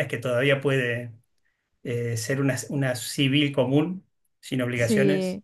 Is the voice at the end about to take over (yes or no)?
no